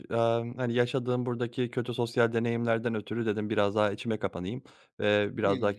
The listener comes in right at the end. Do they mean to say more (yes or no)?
no